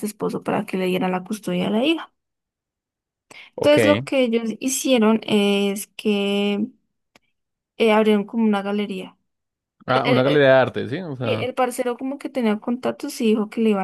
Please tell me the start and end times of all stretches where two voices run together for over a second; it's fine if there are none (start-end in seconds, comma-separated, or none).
none